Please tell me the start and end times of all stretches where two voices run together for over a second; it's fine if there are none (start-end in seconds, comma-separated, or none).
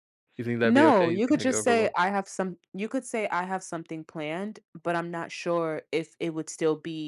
0.6-2.0